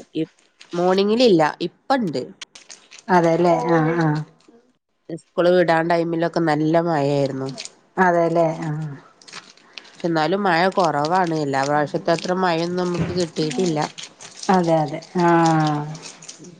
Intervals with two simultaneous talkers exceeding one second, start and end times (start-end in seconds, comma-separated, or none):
none